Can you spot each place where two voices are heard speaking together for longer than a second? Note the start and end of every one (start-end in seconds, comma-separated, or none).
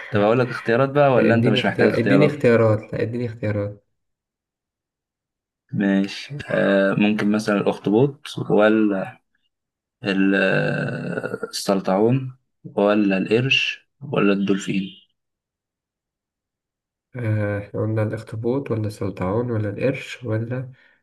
1.2-2.5